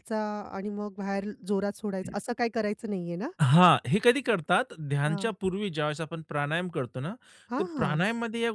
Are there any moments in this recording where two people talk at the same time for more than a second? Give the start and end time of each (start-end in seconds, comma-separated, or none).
none